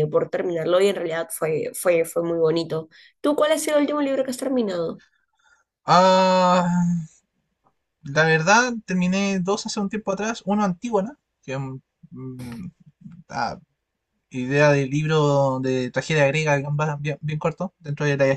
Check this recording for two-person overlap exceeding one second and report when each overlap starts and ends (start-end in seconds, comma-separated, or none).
none